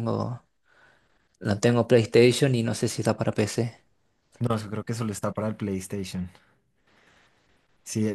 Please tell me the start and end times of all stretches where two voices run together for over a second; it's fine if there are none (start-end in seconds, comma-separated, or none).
none